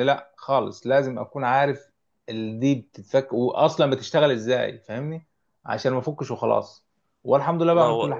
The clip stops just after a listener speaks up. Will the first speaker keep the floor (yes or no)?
yes